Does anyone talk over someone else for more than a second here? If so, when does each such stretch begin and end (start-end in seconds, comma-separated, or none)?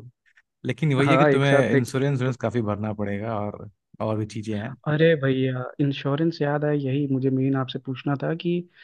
1.1-2.3